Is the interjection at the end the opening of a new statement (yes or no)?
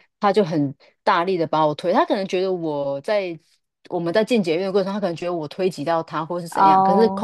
no